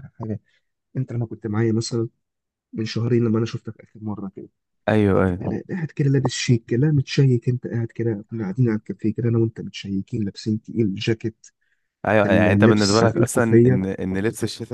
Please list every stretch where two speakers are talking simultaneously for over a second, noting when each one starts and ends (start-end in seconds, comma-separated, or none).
12.2-13.8